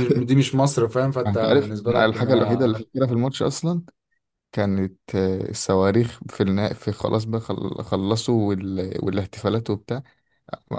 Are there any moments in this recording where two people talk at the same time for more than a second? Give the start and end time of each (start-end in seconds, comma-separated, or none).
1.2-2.7